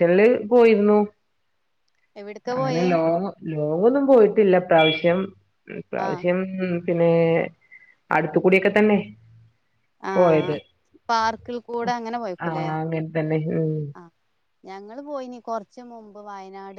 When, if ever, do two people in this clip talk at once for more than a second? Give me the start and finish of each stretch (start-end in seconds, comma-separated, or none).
none